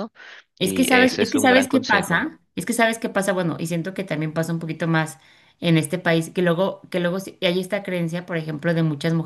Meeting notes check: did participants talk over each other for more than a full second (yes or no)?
yes